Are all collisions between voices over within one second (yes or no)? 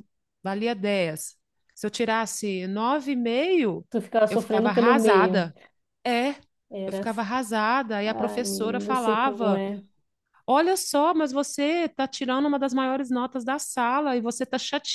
no